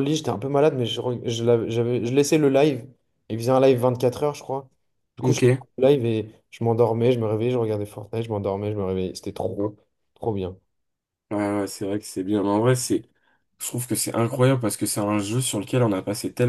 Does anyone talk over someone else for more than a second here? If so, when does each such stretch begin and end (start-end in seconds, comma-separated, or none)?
none